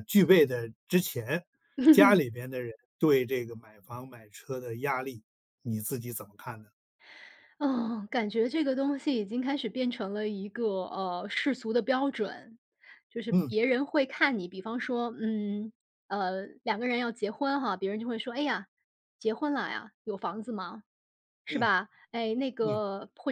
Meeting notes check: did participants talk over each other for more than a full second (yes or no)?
no